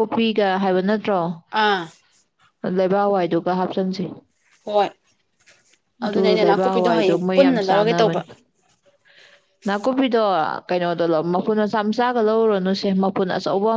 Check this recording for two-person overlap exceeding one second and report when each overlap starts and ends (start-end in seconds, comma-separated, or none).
6.0-8.2